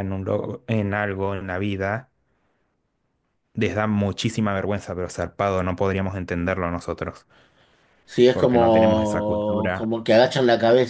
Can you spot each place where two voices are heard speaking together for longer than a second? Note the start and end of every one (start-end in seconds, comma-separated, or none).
8.3-9.9